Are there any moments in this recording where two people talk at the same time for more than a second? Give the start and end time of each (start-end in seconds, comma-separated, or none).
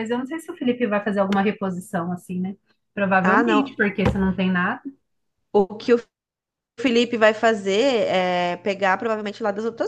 none